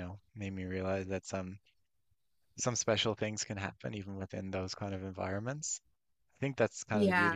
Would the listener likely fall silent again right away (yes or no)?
yes